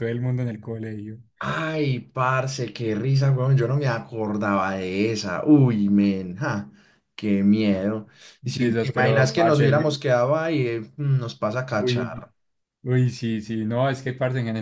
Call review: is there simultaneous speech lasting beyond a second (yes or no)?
yes